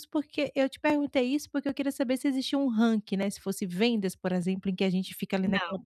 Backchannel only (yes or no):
yes